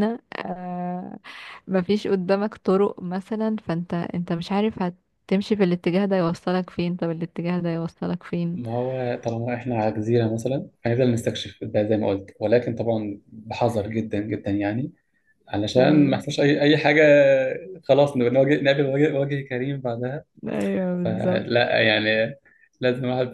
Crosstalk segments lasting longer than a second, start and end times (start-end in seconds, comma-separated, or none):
none